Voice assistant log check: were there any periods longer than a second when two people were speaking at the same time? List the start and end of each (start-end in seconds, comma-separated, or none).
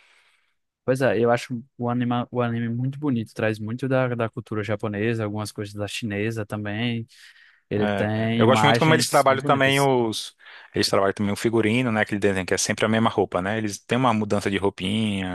7.8-9.9